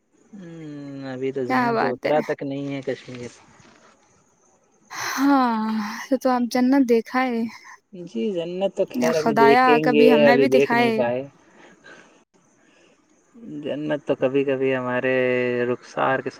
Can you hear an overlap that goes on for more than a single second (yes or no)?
yes